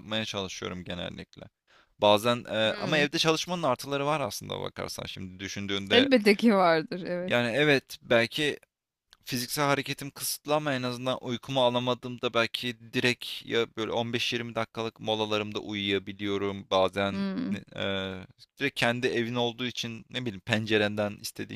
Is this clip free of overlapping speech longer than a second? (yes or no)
yes